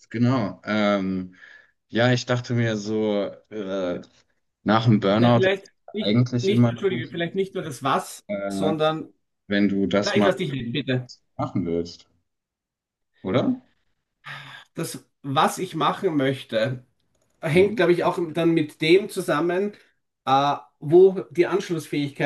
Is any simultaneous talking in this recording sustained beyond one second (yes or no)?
yes